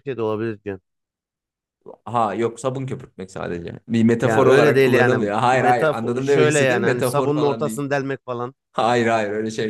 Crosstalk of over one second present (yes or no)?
yes